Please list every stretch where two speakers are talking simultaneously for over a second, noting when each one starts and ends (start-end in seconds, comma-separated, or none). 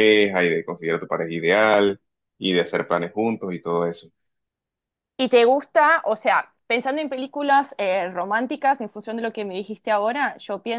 none